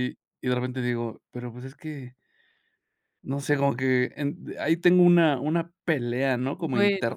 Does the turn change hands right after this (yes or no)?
no